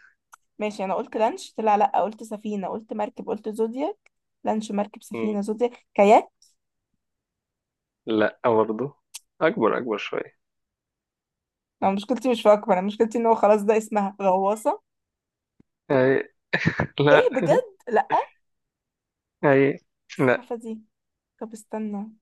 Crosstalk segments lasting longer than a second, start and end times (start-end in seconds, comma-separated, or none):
none